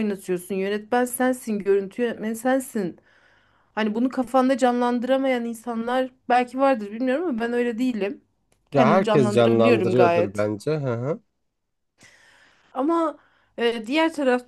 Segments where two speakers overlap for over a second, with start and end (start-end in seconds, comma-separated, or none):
8.7-10.5